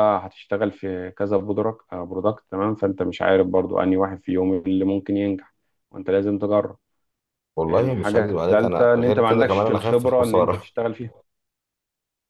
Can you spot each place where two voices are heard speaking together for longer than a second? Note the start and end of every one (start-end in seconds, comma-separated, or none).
7.7-10.7